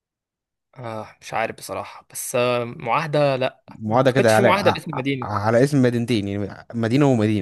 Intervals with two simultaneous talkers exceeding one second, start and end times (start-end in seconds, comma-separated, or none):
3.7-5.3